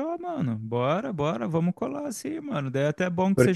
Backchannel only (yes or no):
yes